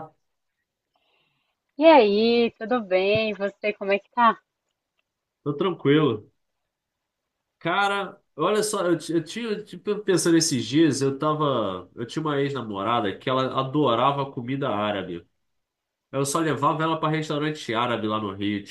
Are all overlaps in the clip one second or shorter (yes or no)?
yes